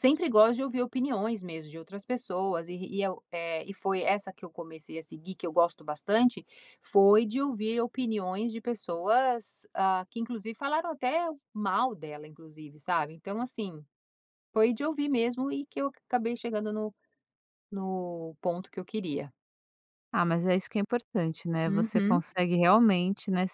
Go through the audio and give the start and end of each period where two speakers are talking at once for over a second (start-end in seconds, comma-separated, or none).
none